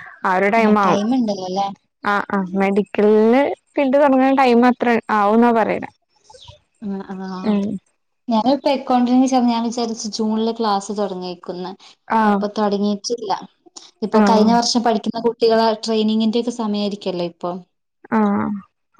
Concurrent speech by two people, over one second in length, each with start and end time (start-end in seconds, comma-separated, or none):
none